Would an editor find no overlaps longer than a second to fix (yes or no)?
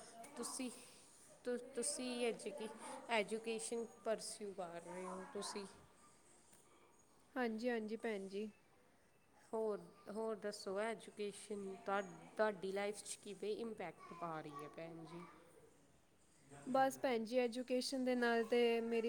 yes